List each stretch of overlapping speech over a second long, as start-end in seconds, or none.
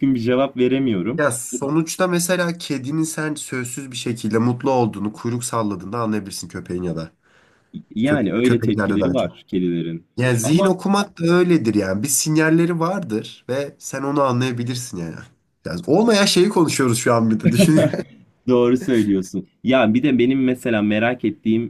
8.0-9.3